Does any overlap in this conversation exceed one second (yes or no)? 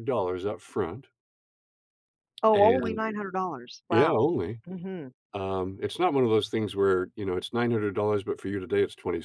no